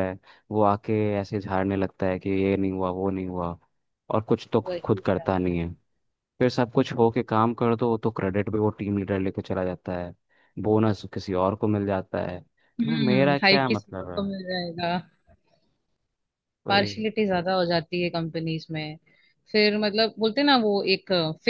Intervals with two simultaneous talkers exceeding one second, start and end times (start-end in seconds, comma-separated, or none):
12.8-14.2